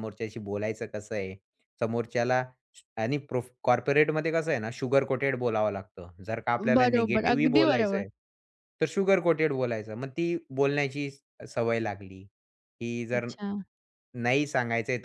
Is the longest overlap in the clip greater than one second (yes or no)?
yes